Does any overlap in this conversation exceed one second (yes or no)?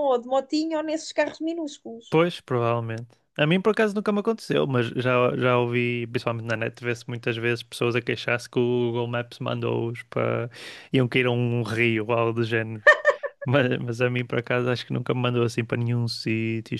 no